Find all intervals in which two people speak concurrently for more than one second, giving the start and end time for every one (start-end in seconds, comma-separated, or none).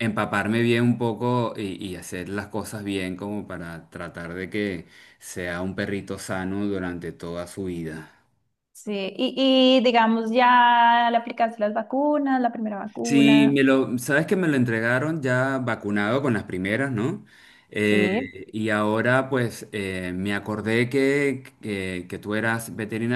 none